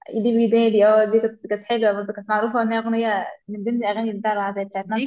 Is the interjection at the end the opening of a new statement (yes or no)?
yes